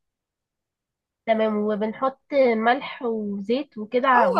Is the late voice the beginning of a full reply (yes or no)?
yes